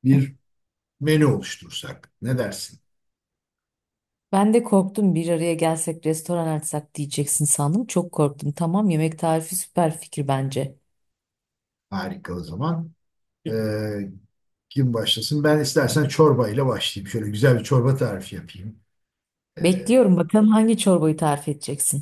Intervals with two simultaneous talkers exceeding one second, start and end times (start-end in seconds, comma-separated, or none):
none